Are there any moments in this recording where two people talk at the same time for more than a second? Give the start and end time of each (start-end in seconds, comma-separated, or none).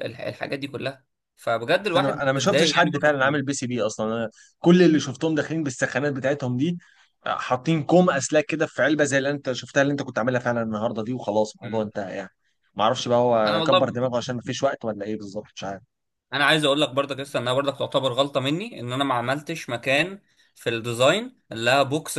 1.8-3.4